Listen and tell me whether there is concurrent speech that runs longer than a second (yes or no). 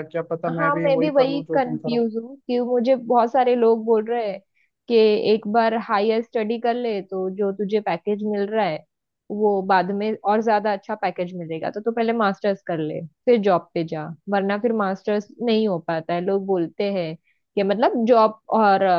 yes